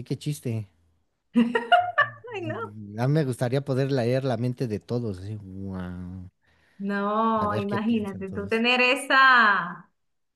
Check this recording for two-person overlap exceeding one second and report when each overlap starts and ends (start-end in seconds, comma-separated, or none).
7.4-8.6